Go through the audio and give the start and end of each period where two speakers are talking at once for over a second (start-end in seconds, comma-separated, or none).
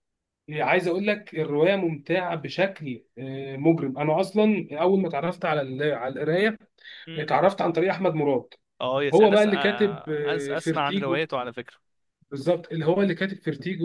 9.1-11.3